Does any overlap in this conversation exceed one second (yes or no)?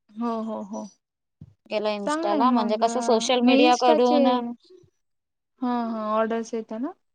yes